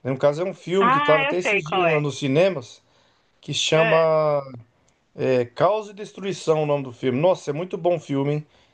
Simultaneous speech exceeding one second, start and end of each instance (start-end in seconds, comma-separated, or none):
0.8-2.0